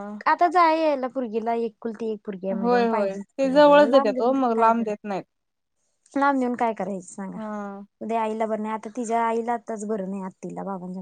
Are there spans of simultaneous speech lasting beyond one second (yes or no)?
yes